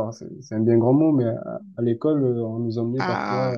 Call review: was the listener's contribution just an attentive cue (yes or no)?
yes